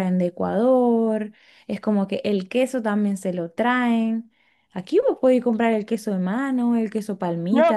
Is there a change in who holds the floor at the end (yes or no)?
yes